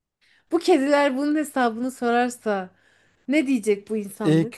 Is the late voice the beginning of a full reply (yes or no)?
yes